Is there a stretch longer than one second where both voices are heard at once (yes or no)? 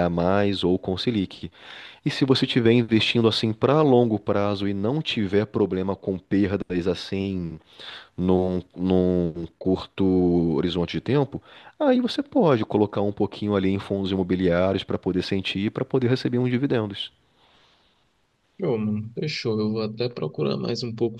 no